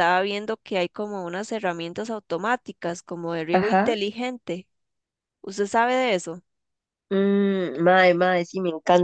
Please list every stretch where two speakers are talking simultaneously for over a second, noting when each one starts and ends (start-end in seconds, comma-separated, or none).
none